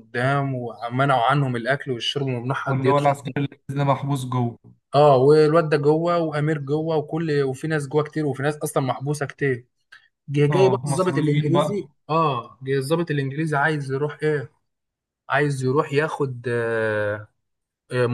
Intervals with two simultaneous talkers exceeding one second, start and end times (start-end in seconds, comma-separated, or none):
10.5-11.8